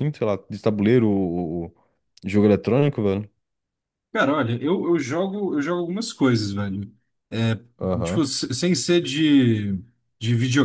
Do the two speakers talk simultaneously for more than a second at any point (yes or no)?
no